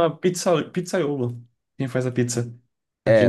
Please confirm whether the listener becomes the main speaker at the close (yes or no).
yes